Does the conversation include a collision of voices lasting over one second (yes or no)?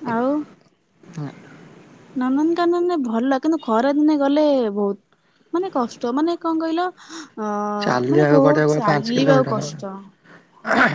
yes